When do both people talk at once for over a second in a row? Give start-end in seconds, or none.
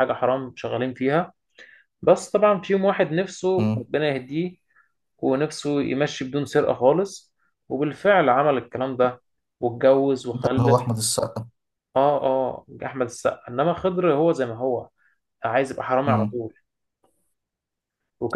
none